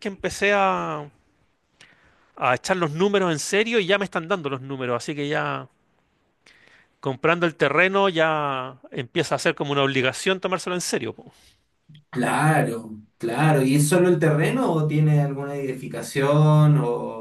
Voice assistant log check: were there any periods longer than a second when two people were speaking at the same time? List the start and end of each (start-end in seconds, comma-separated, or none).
none